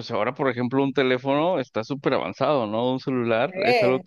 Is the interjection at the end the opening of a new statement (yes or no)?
no